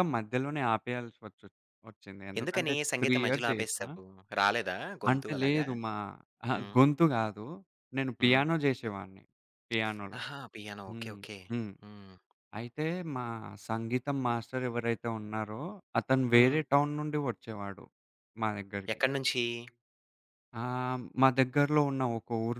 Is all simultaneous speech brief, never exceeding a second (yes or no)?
no